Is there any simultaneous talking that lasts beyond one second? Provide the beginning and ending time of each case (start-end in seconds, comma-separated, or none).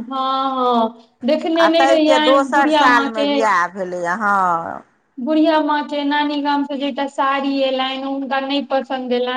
1.6-3.3